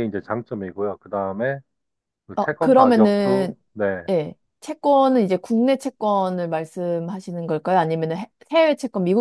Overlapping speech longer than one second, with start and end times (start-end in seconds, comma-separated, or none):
2.4-3.6